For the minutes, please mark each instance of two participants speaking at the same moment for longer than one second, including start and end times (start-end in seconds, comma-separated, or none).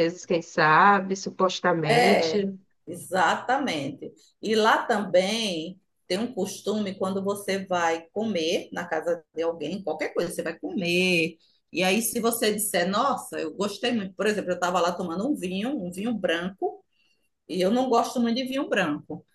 none